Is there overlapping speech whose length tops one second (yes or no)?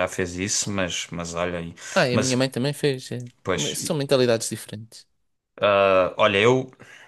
no